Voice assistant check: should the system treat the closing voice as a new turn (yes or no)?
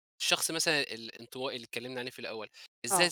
no